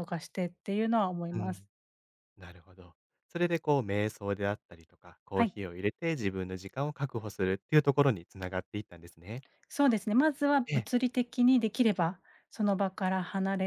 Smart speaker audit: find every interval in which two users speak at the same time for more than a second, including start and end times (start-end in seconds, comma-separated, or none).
none